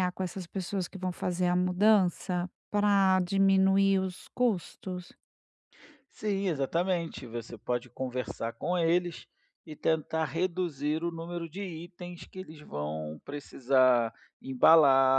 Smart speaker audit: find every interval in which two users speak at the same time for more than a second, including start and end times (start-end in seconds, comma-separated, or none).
none